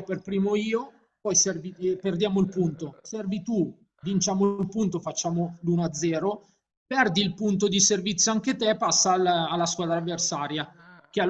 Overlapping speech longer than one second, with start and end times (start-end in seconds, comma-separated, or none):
1.4-3.0